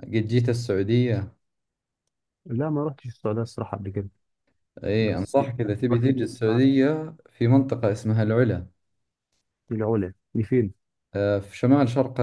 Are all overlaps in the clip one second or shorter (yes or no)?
no